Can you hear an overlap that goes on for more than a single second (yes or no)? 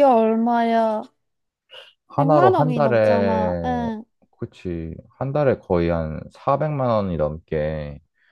yes